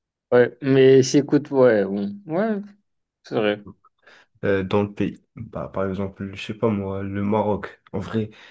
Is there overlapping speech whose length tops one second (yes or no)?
no